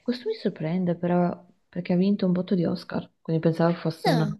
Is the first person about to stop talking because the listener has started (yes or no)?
no